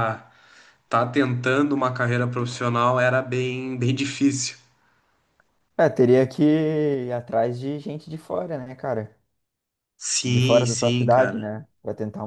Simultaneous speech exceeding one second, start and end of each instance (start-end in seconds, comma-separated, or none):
10.2-11.5